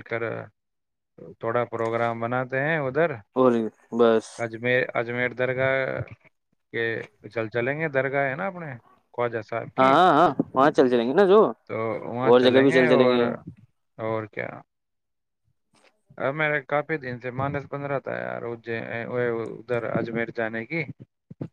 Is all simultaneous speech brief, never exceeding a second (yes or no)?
yes